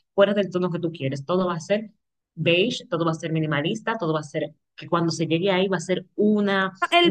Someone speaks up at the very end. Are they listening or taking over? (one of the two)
taking over